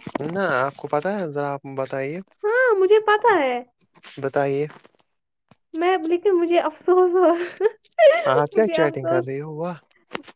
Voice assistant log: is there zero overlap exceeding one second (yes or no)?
no